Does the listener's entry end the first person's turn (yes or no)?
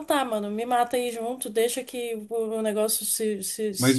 yes